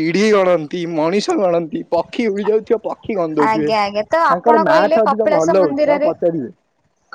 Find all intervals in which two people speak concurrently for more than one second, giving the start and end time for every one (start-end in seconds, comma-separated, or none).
4.3-6.1